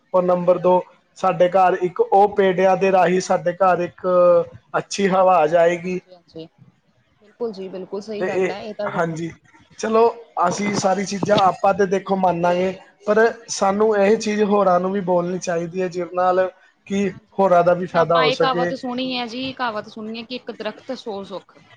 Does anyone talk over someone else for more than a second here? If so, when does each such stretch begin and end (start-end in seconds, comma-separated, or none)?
17.1-18.7